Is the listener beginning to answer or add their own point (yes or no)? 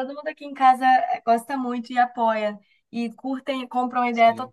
no